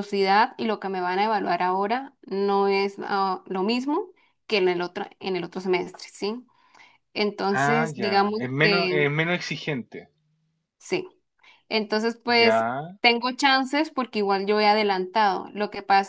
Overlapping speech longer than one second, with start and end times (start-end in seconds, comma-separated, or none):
7.5-9.1